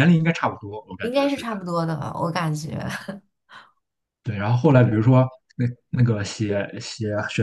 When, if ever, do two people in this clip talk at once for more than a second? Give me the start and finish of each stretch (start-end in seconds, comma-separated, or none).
none